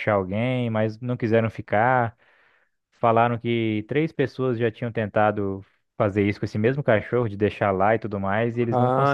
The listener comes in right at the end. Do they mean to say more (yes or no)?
yes